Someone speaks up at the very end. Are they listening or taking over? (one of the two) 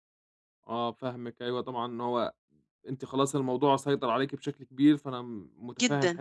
listening